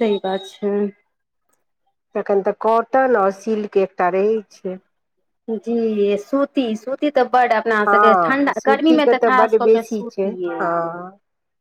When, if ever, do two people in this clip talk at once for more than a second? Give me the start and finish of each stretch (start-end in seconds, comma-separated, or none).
7.9-10.6